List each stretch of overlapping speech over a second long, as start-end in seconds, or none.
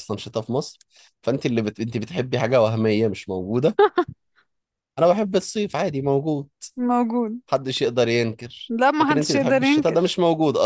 8.7-10.1